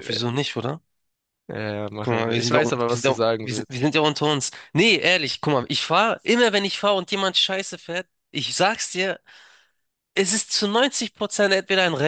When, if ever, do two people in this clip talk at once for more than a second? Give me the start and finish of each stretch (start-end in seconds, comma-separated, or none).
2.0-3.8